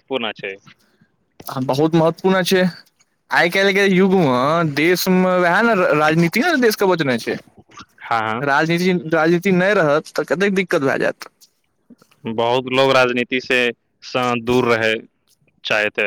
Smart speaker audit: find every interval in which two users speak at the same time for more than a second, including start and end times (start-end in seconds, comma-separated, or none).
none